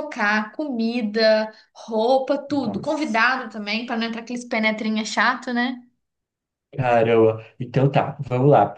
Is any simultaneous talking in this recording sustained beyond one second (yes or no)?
no